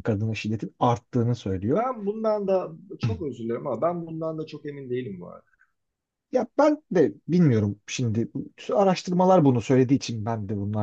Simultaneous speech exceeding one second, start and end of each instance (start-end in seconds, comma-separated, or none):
none